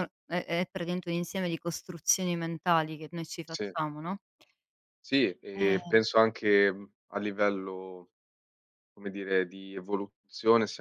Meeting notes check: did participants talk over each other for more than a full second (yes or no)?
no